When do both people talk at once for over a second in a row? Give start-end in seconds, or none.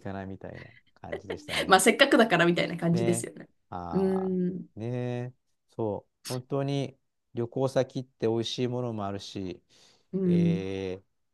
none